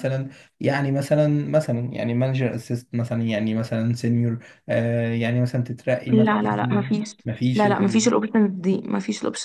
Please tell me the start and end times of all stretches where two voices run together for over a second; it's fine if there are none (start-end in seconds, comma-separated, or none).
none